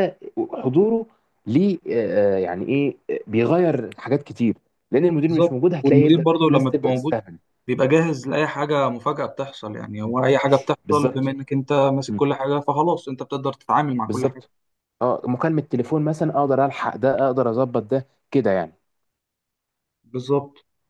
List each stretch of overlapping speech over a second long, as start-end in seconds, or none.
5.3-7.1